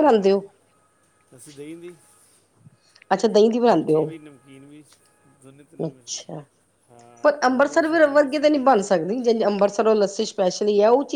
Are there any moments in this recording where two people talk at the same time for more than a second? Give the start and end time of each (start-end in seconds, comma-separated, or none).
7.2-8.7